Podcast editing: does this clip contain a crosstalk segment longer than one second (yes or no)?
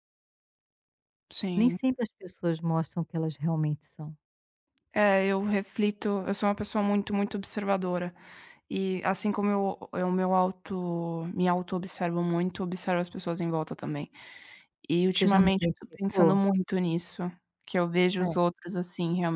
yes